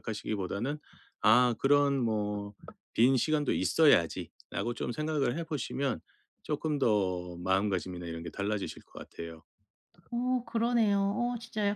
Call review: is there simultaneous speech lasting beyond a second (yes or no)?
no